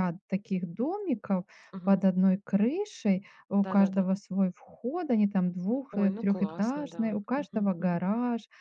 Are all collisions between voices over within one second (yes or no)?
no